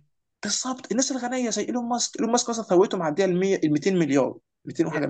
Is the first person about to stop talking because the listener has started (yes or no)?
yes